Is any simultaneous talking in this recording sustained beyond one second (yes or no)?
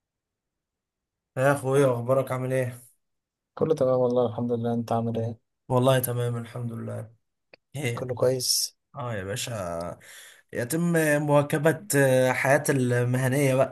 no